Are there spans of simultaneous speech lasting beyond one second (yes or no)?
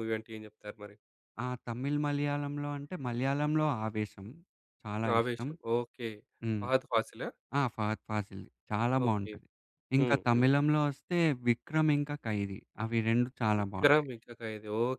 no